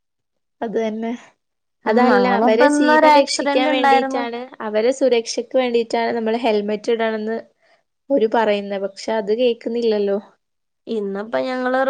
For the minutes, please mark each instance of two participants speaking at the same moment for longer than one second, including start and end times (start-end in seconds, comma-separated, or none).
2.2-4.2